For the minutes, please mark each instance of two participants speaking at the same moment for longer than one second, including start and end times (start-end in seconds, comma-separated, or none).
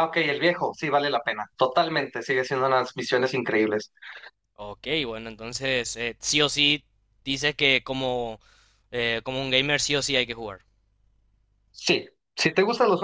none